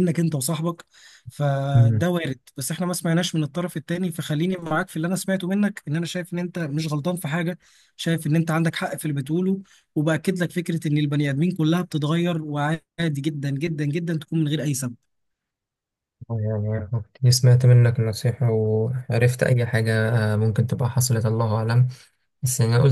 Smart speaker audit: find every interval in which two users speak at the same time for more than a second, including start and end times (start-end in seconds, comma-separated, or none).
none